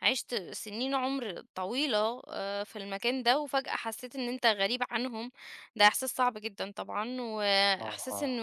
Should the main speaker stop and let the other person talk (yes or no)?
no